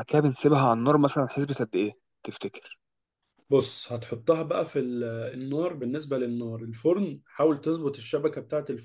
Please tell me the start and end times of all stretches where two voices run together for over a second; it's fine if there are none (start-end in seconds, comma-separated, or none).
none